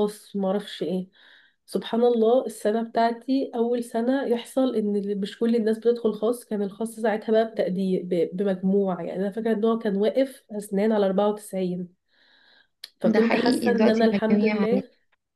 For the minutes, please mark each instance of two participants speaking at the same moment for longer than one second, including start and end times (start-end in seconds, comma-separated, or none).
13.1-14.6